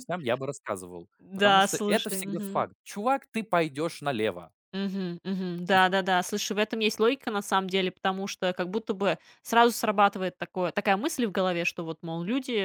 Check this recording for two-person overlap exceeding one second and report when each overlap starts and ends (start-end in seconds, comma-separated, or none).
1.2-2.7